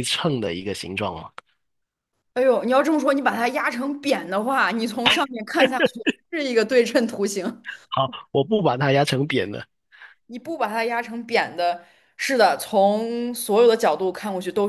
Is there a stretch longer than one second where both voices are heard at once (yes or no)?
no